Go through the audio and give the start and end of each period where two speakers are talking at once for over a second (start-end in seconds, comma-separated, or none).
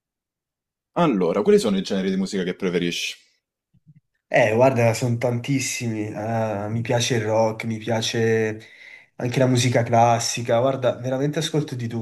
none